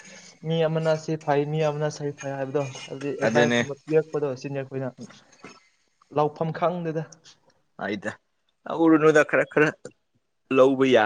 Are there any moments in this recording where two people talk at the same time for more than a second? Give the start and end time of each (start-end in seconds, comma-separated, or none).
none